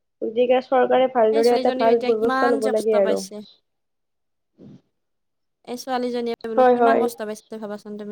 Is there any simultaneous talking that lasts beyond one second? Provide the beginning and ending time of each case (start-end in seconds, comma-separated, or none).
1.4-3.2